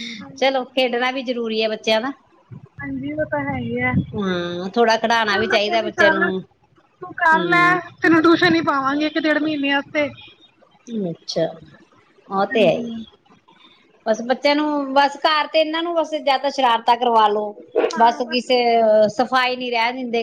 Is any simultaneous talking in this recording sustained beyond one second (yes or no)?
yes